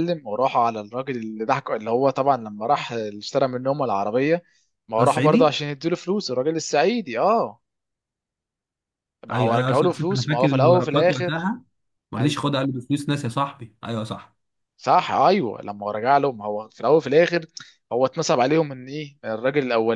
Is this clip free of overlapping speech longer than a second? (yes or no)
no